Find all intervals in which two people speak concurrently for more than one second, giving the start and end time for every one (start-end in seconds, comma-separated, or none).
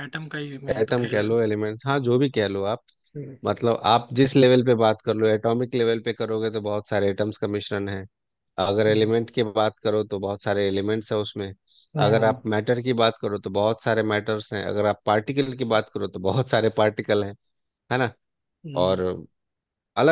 none